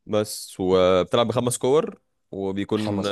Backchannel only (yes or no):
yes